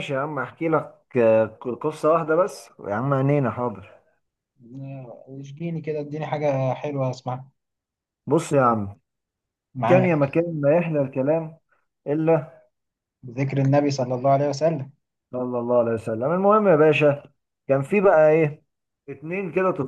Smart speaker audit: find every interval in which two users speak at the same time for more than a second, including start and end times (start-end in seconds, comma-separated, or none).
none